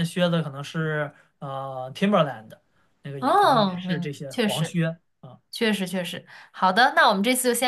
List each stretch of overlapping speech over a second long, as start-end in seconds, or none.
3.2-4.8